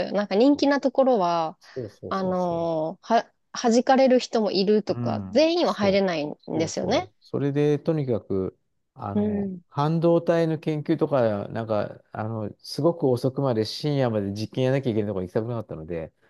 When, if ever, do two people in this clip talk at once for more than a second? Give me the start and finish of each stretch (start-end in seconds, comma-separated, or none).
4.9-7.1